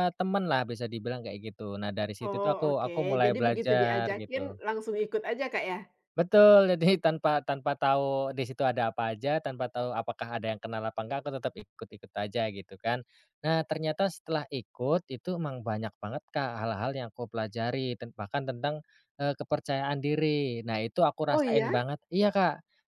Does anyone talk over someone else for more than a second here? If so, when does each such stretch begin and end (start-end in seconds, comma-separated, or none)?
2.3-4.5